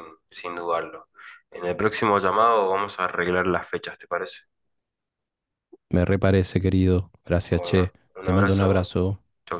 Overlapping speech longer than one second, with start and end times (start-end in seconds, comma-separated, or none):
7.5-8.9